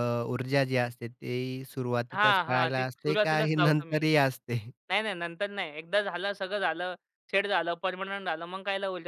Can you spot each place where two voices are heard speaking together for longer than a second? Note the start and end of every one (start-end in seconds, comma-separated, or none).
2.1-4.0